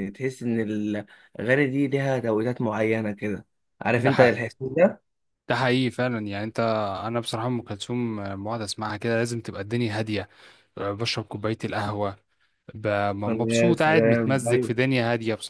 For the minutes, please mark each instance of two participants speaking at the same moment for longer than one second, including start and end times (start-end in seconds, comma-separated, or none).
13.5-14.7